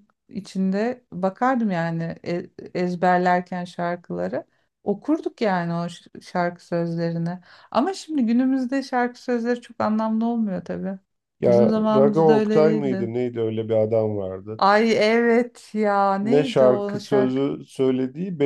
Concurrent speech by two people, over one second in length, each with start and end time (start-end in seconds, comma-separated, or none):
11.5-13.1, 16.2-17.4